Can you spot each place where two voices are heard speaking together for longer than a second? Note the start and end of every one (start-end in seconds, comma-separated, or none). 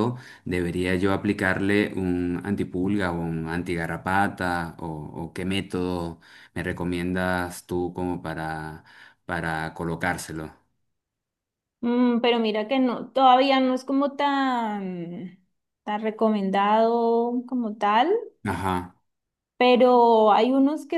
none